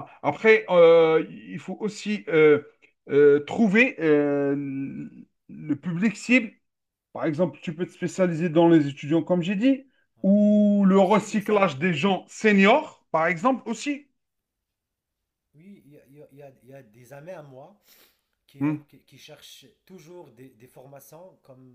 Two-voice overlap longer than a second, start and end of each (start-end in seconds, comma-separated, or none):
10.2-12.1